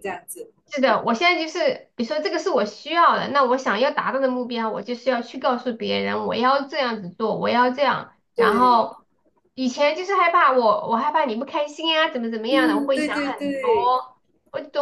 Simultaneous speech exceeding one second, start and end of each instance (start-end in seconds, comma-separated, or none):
12.5-14.0